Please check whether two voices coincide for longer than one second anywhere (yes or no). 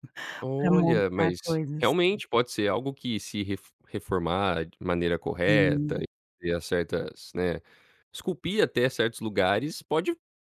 yes